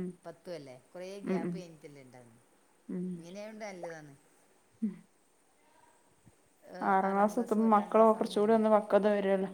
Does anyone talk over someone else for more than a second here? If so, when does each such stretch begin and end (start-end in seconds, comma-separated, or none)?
7.1-8.4